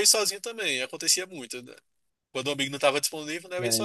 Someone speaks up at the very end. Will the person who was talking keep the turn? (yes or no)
no